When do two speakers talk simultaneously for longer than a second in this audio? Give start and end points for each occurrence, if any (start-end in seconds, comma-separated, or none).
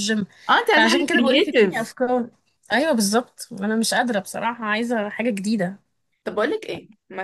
0.7-1.9